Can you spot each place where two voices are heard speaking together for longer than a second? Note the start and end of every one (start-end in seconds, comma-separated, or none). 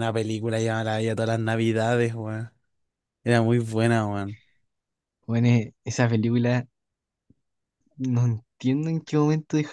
none